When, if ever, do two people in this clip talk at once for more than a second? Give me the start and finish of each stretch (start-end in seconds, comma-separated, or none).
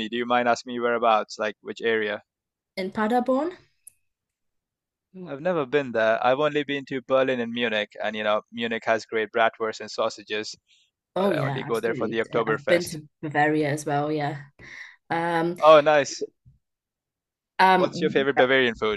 11.2-13.0